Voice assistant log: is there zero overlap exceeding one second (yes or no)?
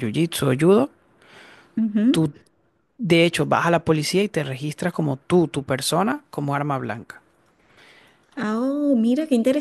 yes